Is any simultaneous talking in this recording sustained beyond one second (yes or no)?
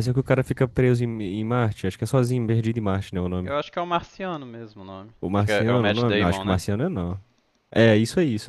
yes